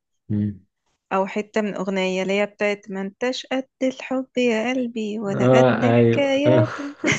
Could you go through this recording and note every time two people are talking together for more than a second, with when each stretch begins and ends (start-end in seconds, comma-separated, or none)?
5.3-6.7